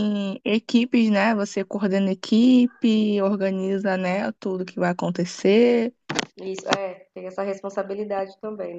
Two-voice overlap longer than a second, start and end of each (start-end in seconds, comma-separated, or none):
none